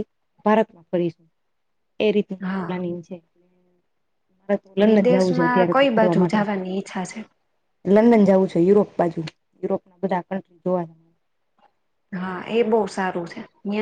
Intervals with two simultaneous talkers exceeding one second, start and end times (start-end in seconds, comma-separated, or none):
4.9-6.4